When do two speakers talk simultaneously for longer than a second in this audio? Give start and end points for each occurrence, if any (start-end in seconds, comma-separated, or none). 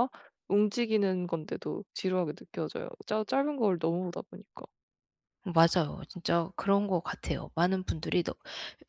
none